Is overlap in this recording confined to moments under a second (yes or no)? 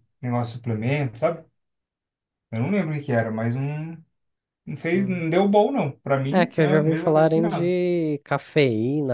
no